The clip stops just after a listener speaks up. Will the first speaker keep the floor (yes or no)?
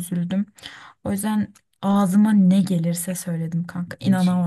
no